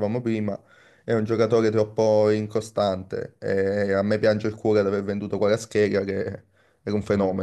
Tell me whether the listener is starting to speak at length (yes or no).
no